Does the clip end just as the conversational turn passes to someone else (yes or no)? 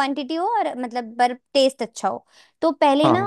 no